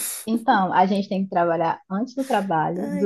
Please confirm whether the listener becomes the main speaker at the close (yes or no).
no